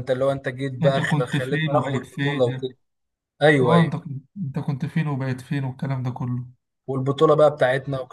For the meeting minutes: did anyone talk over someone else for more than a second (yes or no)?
yes